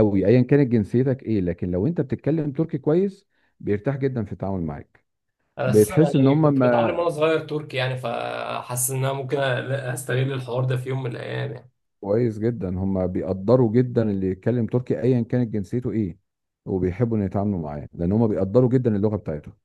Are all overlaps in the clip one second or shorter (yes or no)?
no